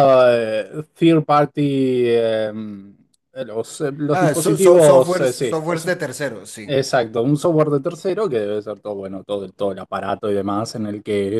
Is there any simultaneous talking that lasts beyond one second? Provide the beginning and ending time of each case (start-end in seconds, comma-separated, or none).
4.1-5.9